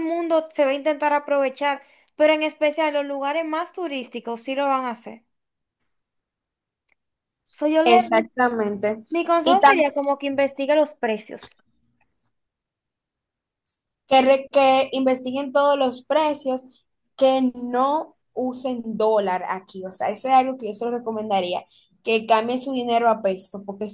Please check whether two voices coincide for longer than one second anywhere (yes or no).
no